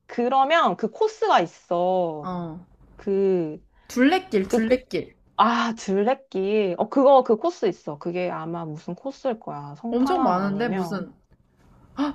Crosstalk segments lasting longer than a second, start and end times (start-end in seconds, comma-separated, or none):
9.9-11.1